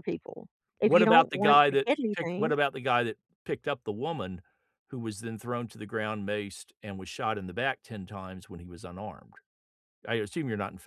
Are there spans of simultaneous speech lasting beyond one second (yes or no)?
yes